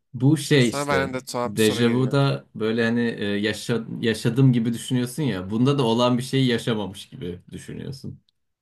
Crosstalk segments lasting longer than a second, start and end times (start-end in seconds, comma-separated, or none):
0.6-2.2